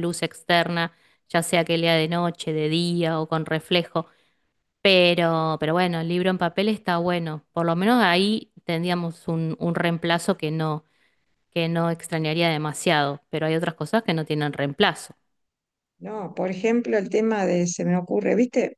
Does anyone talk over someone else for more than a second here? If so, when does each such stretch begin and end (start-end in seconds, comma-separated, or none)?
none